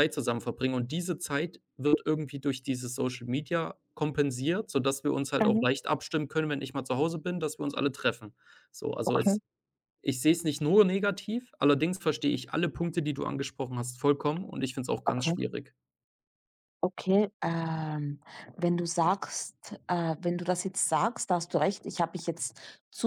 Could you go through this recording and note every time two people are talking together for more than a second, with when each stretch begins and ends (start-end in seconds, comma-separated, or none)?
none